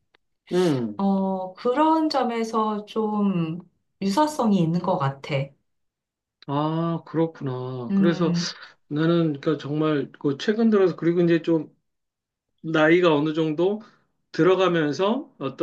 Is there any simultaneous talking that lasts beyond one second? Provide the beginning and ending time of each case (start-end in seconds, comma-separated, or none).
none